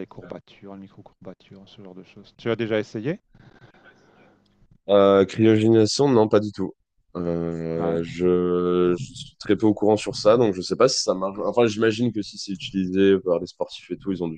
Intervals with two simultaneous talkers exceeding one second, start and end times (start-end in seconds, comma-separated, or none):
none